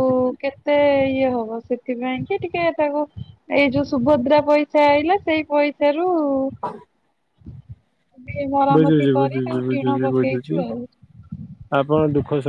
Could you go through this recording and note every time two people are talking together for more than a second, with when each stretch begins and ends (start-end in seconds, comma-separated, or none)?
8.8-10.6